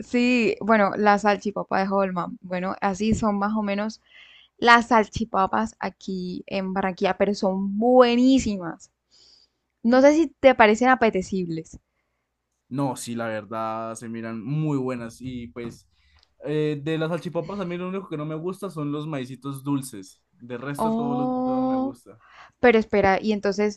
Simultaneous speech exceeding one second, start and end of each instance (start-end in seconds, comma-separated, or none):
20.8-22.0